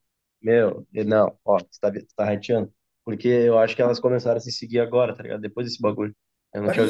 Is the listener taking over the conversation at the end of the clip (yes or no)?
yes